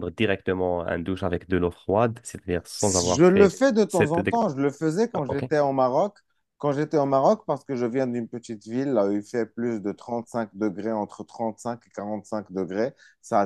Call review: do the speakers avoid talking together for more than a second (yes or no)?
no